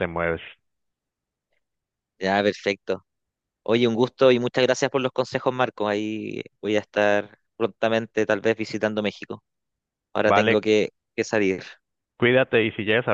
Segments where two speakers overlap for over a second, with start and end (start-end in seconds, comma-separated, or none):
none